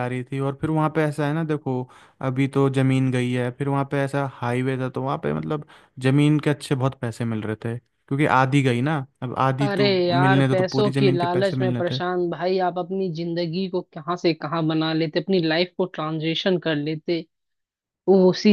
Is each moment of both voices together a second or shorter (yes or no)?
no